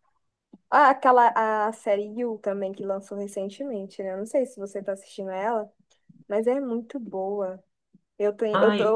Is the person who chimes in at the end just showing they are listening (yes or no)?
yes